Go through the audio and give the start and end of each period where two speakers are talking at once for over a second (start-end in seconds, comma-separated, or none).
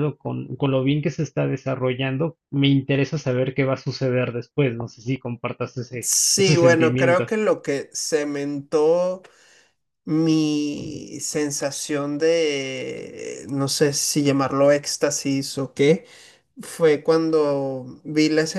6.0-7.3